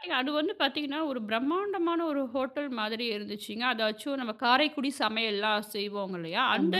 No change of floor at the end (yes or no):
yes